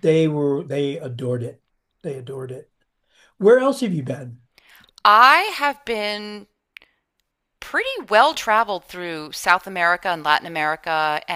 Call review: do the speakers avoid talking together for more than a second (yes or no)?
yes